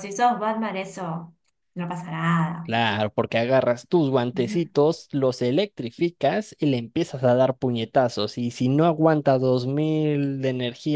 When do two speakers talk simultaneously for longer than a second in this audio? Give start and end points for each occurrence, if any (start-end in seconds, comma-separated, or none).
none